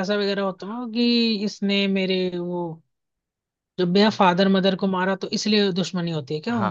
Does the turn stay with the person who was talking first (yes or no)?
no